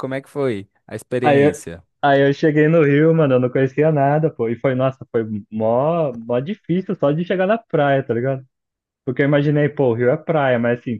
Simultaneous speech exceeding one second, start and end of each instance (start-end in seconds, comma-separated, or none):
none